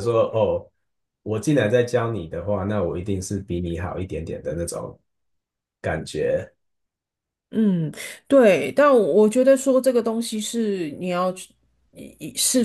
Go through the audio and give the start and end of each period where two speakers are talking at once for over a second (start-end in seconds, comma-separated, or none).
none